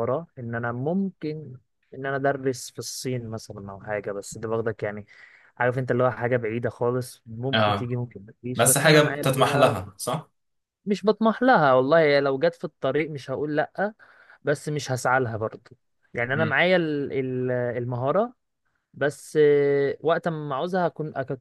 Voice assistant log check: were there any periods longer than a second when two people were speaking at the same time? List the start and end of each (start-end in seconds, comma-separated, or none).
8.6-9.8